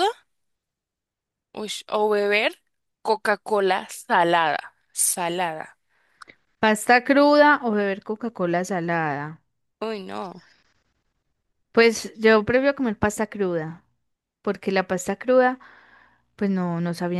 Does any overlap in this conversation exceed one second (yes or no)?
no